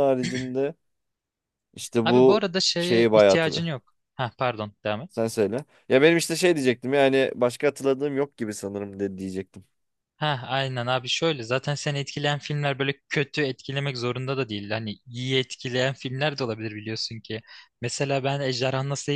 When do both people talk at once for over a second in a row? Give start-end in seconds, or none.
2.0-3.7